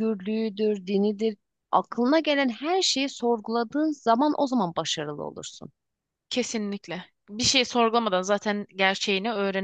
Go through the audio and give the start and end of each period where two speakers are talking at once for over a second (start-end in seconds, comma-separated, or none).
none